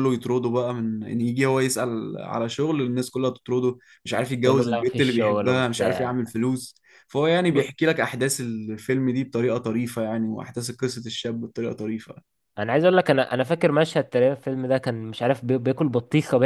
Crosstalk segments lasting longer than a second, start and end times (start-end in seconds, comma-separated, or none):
4.4-6.1